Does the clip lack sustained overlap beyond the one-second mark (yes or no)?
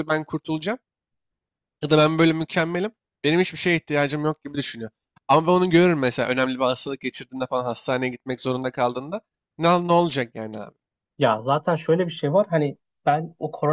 yes